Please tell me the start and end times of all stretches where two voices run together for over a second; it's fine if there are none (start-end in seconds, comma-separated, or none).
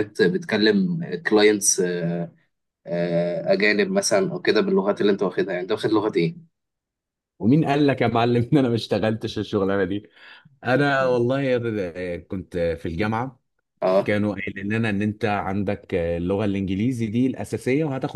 none